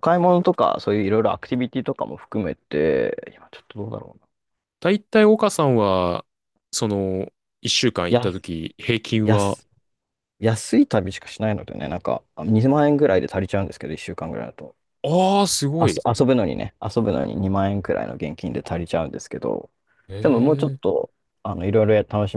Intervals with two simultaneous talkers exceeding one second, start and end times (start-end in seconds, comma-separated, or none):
none